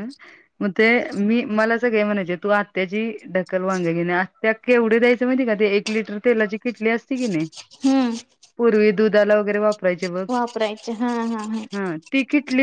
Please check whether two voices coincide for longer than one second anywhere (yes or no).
no